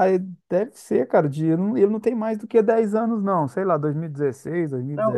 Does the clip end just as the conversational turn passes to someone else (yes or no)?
yes